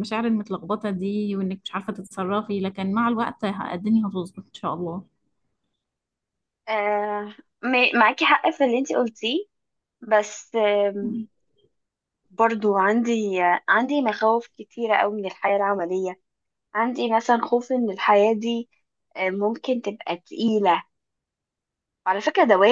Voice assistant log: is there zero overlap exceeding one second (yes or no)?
yes